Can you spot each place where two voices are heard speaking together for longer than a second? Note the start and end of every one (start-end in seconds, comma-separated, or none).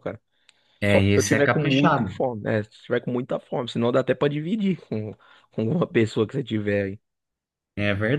0.9-2.2